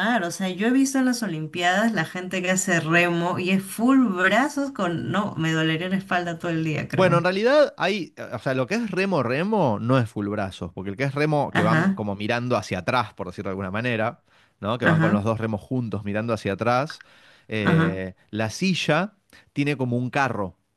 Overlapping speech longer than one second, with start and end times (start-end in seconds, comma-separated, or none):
none